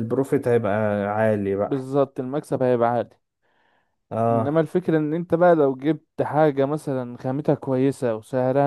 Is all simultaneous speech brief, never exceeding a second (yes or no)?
yes